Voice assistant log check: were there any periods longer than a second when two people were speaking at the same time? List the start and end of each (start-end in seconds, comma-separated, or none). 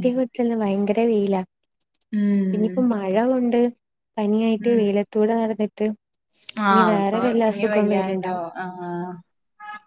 6.7-8.4